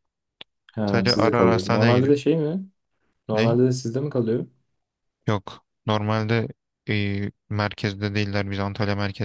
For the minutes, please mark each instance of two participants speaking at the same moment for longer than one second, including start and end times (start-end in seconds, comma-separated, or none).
0.8-2.1